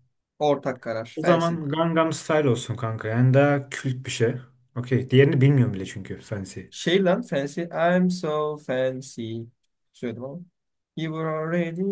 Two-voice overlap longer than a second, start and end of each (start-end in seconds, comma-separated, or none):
none